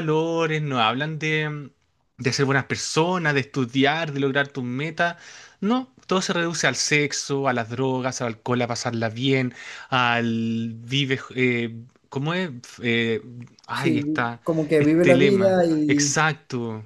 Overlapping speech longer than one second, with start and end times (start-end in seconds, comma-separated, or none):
14.8-16.2